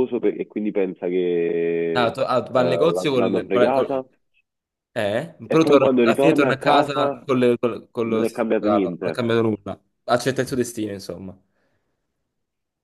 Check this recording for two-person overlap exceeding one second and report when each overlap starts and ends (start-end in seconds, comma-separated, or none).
2.0-4.0, 5.4-7.2, 8.0-9.3